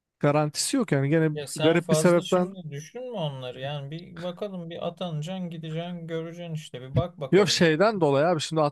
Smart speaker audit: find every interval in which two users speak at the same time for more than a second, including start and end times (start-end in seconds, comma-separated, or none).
1.3-2.6